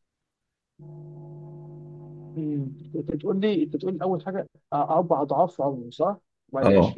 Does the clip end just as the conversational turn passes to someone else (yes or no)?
no